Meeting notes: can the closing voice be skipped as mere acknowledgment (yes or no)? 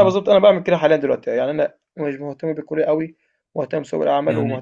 yes